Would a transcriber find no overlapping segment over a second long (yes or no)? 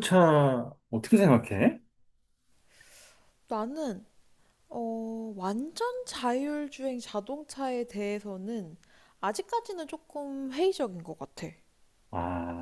yes